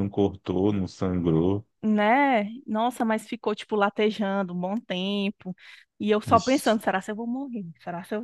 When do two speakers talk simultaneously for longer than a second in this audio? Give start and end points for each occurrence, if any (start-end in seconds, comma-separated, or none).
none